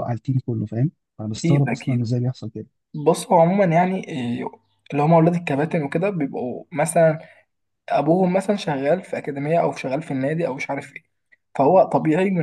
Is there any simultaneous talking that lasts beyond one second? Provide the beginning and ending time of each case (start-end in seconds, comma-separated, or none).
none